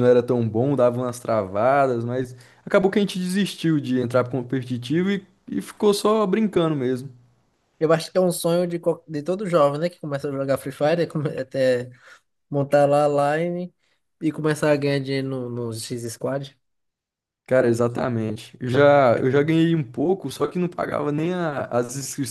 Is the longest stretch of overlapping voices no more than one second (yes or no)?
yes